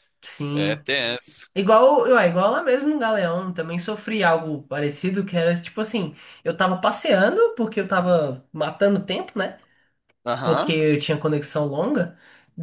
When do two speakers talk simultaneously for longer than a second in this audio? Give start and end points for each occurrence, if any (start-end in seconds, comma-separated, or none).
none